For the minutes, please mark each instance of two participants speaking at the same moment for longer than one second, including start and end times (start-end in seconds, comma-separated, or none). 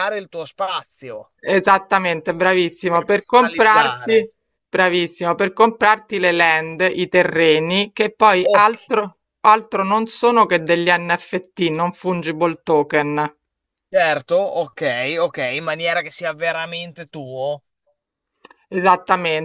2.9-4.3